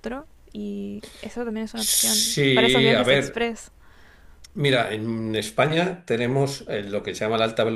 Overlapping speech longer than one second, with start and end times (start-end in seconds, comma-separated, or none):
1.7-3.5